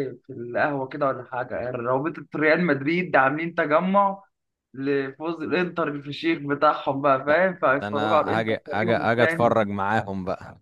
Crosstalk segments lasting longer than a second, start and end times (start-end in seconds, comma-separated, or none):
7.3-9.5